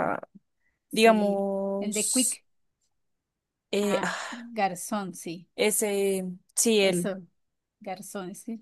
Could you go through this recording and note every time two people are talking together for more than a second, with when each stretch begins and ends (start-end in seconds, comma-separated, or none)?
0.9-2.4